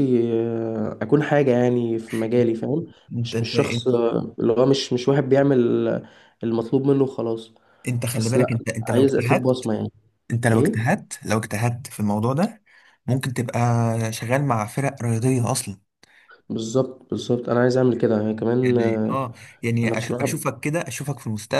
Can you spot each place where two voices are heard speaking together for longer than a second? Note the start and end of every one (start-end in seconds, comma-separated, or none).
8.1-9.7